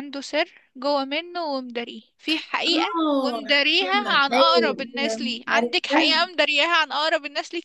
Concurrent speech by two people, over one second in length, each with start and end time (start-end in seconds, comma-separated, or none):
2.7-6.1